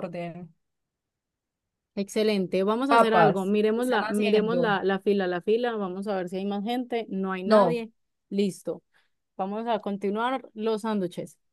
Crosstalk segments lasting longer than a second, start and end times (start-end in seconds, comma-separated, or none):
2.9-4.8